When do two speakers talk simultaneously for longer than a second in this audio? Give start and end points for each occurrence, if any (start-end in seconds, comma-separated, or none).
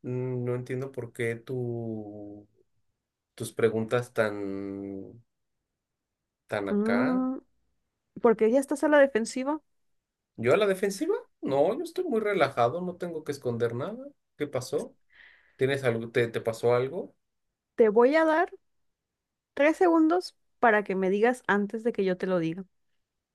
none